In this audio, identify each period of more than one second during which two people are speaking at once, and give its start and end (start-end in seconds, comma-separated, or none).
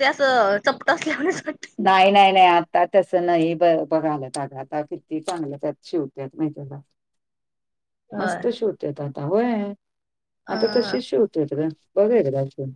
none